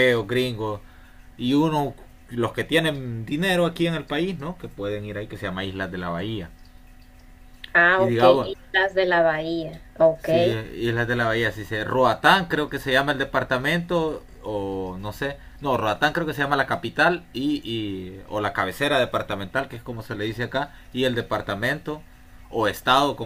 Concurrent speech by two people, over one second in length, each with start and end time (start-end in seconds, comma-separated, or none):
none